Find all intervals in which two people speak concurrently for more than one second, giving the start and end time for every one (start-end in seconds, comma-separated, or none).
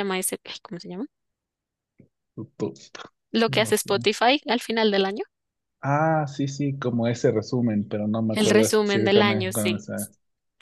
8.3-9.8